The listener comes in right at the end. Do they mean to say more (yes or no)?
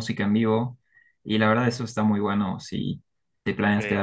no